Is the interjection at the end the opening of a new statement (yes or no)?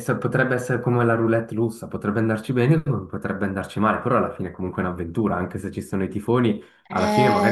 yes